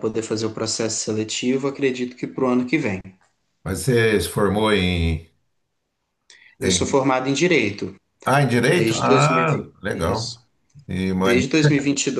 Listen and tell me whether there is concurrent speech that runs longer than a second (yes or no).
yes